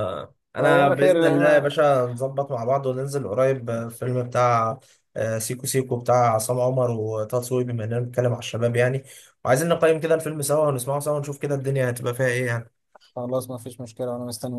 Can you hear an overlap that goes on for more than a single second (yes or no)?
yes